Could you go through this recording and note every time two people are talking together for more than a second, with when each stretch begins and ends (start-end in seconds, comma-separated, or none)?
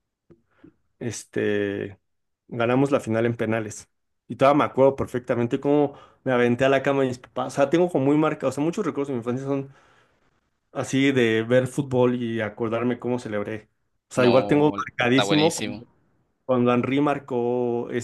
14.2-15.9